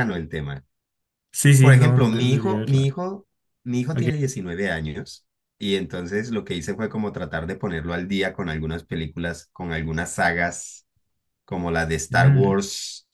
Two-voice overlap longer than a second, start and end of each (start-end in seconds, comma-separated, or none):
1.6-2.9